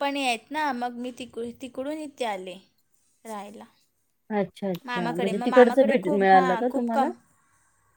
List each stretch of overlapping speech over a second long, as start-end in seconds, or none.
4.9-7.1